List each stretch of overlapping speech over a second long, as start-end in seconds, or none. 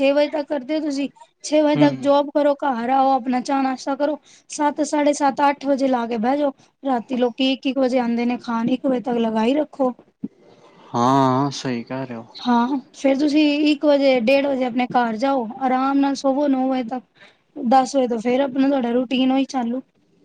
none